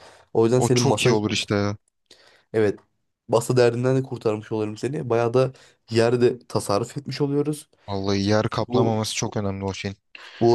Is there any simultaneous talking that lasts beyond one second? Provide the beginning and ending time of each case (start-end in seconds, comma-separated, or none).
none